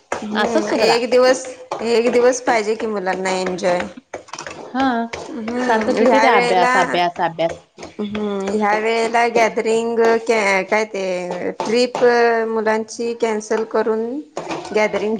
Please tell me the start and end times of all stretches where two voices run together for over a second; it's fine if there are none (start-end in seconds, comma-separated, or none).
5.3-6.7